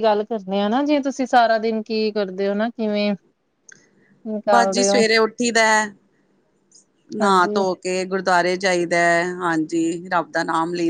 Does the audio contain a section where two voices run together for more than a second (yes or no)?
no